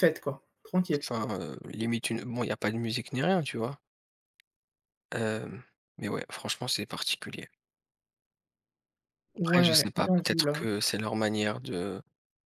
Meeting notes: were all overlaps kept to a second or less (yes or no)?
no